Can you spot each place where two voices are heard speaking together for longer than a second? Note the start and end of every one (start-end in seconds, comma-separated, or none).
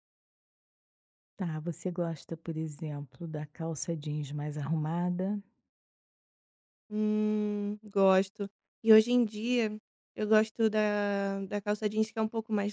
none